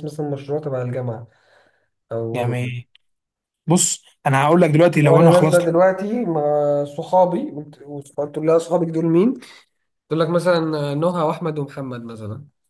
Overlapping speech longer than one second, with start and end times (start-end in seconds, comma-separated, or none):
none